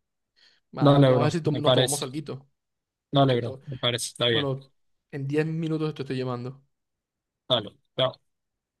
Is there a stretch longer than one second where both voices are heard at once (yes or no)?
yes